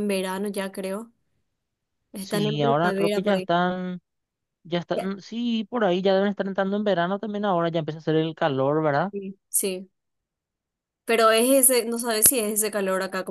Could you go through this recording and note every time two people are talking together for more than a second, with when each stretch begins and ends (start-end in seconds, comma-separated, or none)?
2.2-3.5